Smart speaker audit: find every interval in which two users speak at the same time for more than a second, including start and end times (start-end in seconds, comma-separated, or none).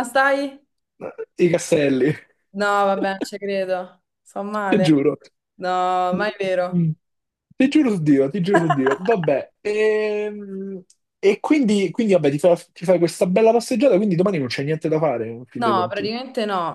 none